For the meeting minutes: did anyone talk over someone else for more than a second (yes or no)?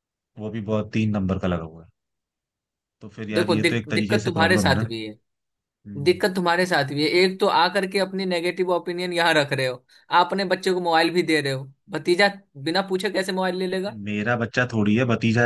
yes